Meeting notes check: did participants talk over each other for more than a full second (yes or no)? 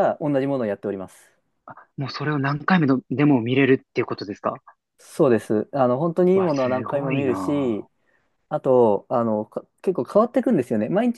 yes